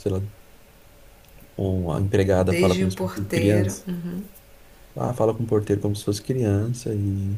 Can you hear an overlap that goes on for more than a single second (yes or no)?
yes